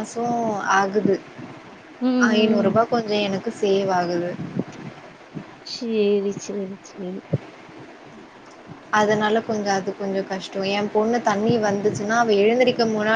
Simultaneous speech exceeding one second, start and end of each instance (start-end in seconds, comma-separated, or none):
none